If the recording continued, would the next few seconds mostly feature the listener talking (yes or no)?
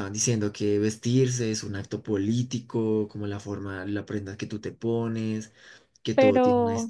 no